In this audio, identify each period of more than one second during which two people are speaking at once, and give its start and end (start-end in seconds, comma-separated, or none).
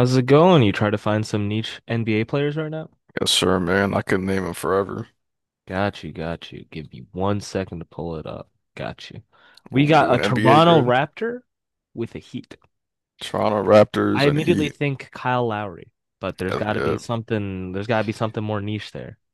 9.7-10.9